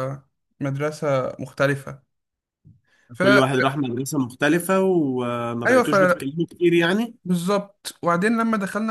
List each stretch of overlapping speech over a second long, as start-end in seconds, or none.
none